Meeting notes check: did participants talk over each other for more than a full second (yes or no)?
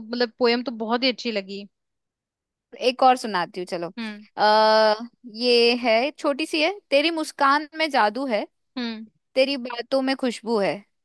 no